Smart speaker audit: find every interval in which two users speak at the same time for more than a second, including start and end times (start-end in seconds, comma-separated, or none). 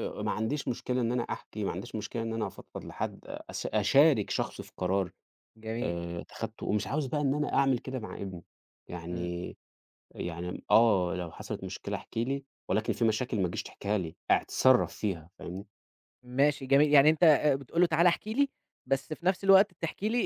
none